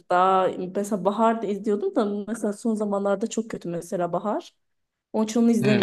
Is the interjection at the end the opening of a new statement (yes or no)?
yes